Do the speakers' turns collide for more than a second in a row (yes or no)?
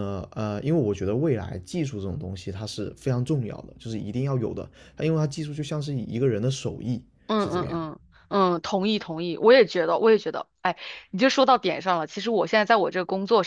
no